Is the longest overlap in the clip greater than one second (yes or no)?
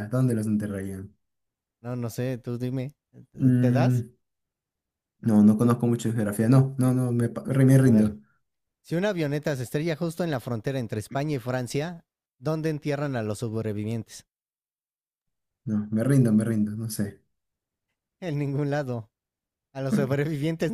no